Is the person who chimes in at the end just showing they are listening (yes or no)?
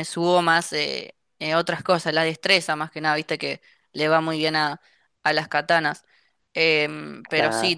yes